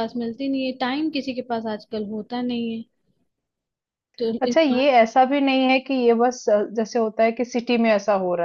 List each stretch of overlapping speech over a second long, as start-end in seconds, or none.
none